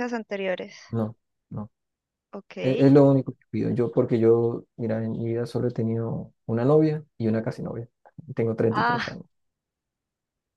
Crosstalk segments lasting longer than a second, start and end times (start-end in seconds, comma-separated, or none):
none